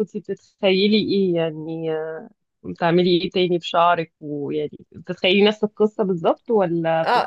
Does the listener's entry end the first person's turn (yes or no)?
yes